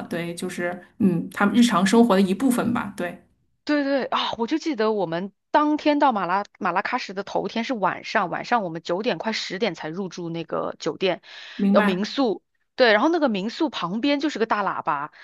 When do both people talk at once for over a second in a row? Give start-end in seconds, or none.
none